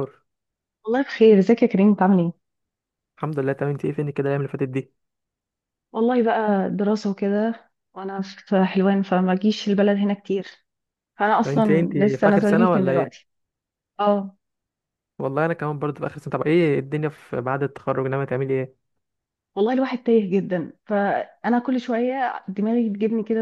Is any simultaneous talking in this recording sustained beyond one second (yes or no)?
yes